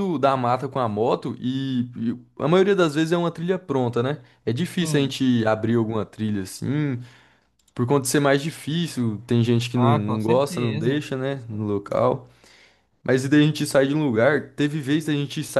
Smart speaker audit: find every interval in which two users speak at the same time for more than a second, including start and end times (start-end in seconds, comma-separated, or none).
9.8-11.1